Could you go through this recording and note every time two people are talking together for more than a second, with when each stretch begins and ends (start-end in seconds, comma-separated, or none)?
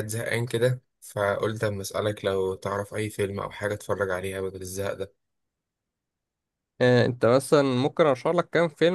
none